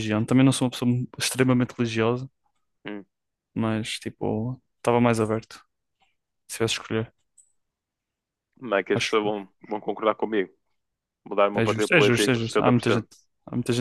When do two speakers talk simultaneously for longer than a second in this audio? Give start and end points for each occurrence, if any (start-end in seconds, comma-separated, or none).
11.5-13.1